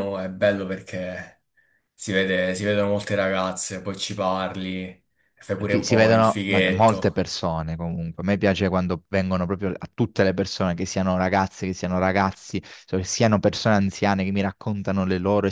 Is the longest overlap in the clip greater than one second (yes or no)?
yes